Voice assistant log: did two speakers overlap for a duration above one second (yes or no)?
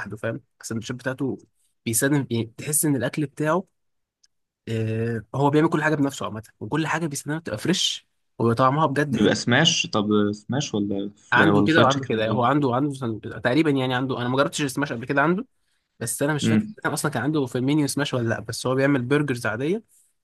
yes